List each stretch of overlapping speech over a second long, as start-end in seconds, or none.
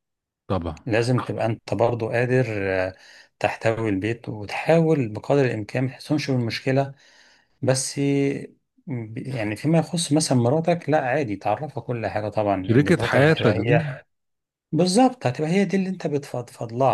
12.6-13.9